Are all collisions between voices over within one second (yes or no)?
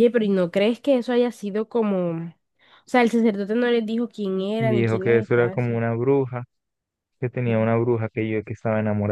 no